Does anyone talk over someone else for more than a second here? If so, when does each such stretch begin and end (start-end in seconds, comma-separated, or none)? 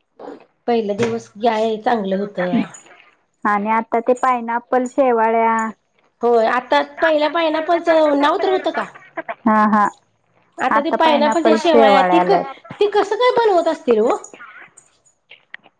none